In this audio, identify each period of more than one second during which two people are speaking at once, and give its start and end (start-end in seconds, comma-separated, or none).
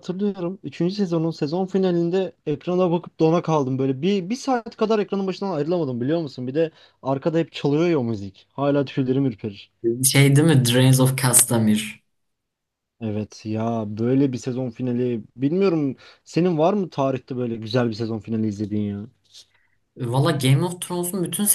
none